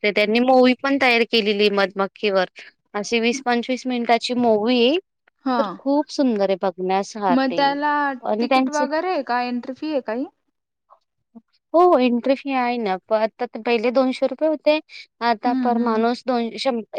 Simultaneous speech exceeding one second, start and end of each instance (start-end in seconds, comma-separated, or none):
none